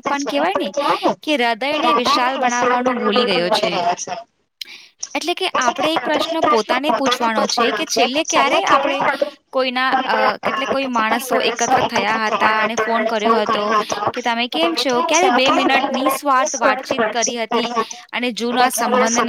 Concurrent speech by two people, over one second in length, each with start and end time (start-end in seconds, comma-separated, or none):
1.8-3.7